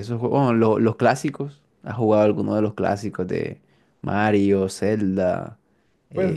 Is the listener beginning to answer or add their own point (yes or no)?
yes